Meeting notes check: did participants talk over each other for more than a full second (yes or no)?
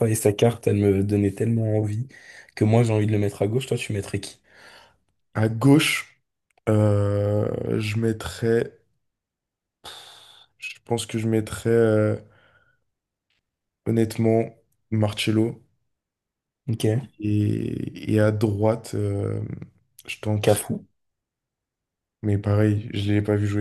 no